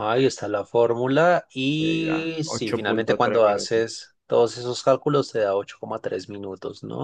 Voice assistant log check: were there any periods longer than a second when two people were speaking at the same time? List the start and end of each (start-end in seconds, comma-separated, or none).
1.8-3.8